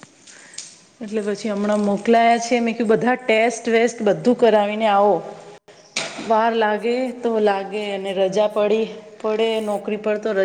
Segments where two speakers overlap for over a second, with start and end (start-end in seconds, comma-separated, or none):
6.8-8.7